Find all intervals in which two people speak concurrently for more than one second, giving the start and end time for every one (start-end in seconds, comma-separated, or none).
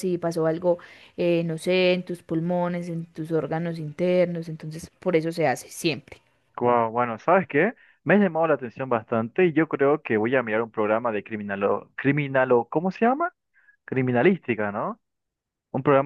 none